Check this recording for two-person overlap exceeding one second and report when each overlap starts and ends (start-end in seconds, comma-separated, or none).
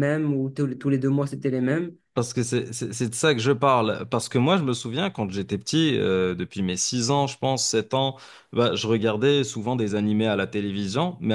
none